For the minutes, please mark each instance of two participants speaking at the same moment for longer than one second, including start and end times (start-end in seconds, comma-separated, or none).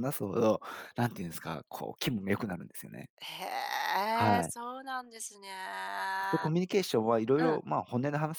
none